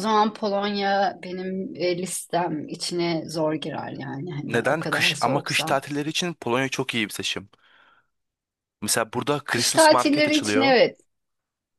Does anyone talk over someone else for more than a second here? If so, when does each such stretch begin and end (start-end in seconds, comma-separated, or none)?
4.5-5.8, 9.5-10.8